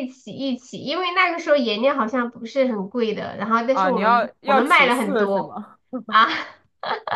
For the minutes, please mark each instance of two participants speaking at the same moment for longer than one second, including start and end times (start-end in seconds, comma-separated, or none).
3.7-5.6